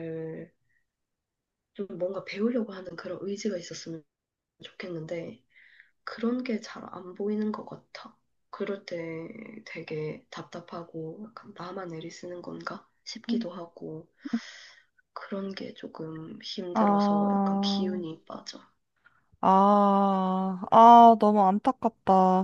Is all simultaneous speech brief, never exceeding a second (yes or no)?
no